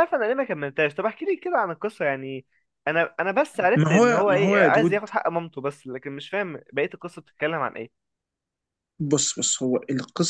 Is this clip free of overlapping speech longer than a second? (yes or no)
no